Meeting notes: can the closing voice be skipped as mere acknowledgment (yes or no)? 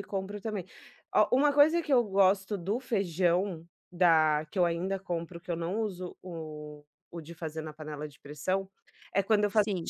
yes